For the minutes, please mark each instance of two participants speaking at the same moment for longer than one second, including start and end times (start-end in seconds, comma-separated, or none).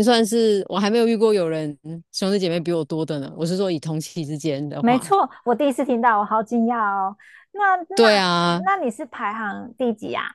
none